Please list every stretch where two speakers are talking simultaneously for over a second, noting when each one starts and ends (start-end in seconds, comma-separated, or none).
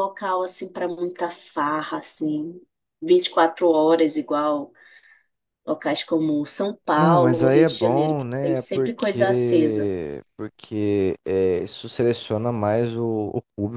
7.0-9.9